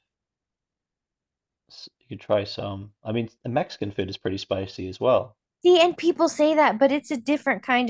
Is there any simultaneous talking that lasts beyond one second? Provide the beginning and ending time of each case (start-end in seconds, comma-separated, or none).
none